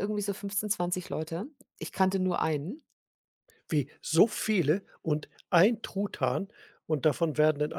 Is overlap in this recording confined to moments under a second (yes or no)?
yes